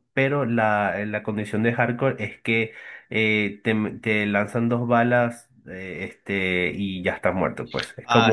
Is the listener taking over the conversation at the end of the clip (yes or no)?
yes